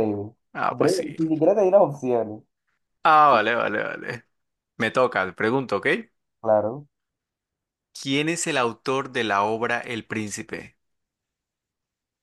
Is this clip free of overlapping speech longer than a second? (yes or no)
yes